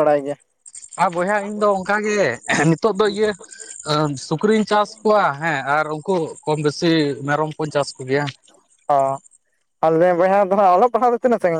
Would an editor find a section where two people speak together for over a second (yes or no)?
no